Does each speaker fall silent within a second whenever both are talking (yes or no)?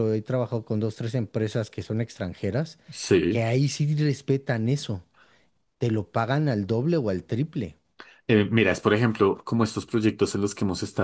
yes